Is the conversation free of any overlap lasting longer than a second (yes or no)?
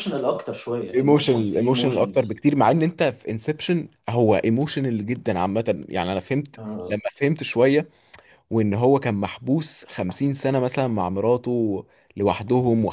no